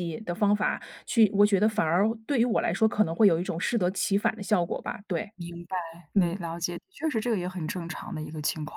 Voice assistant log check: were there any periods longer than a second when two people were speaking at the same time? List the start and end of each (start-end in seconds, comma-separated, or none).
none